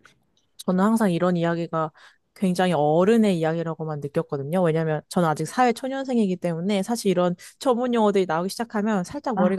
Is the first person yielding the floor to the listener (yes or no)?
no